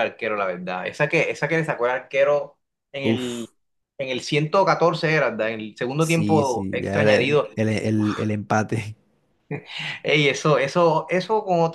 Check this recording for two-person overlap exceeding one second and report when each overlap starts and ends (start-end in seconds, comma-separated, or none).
6.0-7.5